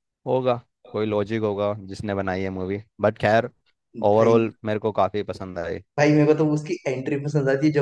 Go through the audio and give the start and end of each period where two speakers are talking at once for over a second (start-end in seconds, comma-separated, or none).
none